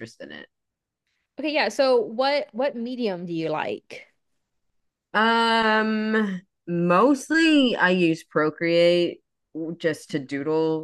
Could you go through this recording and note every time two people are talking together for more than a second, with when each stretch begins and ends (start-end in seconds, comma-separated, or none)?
none